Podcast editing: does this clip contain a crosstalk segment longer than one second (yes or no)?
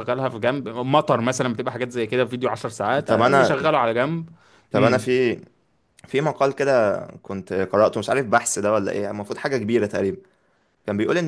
no